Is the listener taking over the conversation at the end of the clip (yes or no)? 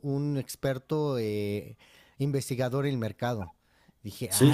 yes